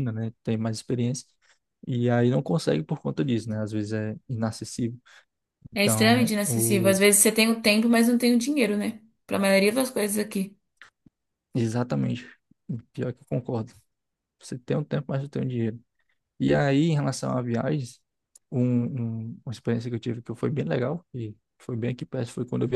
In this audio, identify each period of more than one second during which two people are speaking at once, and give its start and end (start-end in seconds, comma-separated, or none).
5.8-7.0